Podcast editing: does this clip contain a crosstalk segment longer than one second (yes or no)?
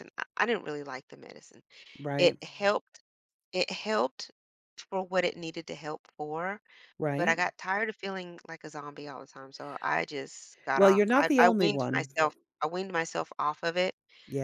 yes